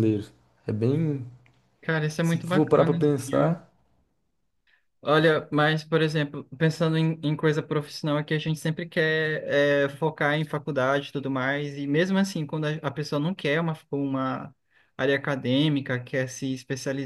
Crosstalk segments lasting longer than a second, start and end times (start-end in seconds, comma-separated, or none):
2.2-3.6